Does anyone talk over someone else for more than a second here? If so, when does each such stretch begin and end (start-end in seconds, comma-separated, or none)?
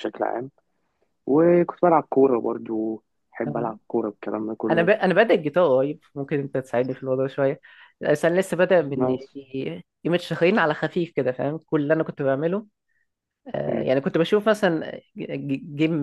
none